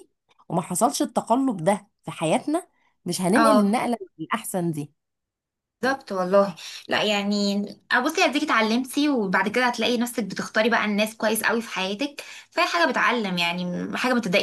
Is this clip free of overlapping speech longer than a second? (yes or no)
yes